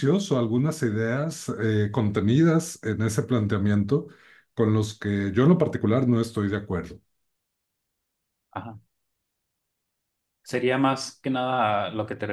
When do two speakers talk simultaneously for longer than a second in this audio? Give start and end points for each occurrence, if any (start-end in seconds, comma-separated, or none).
none